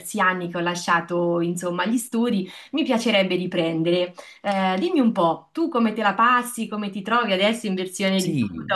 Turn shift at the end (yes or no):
yes